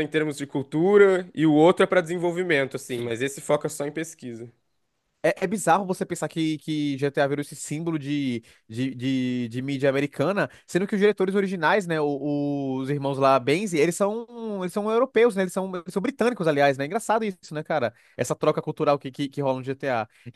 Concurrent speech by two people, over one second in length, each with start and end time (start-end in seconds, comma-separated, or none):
none